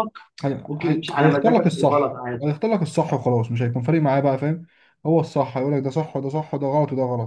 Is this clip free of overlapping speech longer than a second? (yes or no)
no